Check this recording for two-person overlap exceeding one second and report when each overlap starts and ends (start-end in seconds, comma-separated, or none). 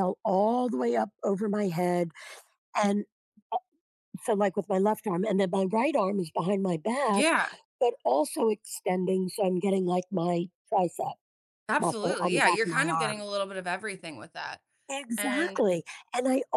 11.8-13.2